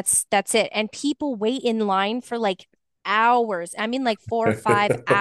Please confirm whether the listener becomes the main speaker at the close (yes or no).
no